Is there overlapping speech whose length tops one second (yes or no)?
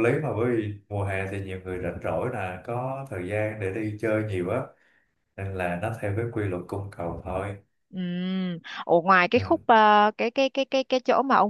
no